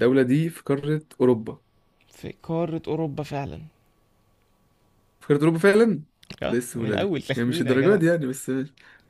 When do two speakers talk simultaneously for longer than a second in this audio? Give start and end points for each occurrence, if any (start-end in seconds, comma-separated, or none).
6.5-8.0